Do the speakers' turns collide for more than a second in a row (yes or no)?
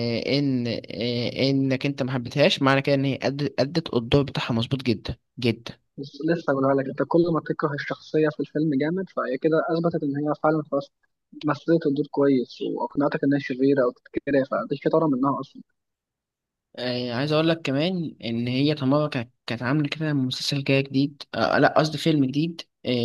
no